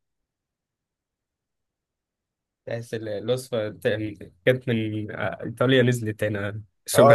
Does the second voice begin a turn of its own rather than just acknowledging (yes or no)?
yes